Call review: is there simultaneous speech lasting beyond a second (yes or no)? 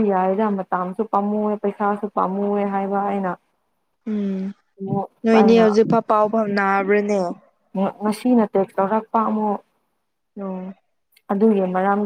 no